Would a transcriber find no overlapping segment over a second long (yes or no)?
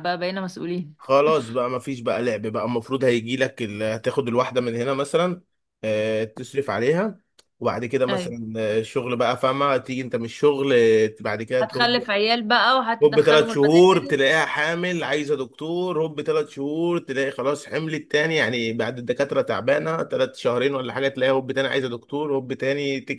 no